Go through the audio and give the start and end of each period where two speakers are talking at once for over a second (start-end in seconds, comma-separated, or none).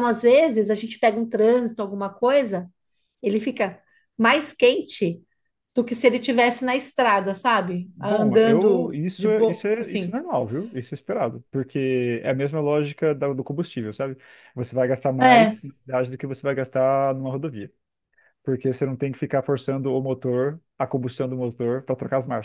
8.0-10.2